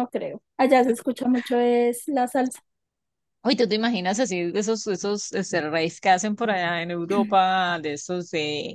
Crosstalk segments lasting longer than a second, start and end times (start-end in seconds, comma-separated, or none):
none